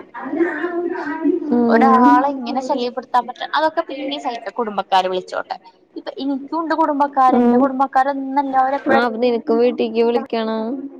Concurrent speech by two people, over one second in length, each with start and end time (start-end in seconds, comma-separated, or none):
1.7-3.0